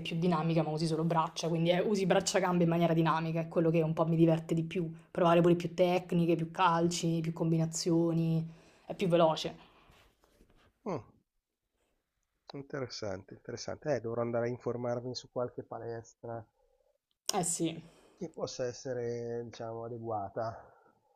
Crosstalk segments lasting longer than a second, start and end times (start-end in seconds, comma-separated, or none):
none